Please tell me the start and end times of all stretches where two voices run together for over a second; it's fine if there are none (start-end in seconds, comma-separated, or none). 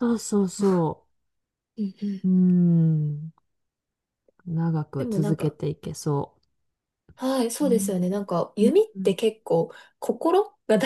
7.6-9.2